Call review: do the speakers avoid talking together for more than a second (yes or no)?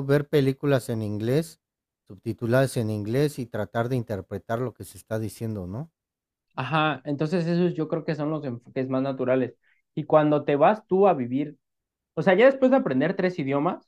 yes